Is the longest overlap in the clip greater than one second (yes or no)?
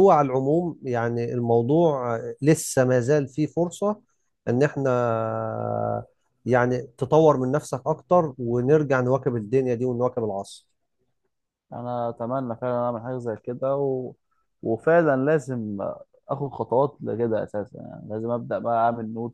no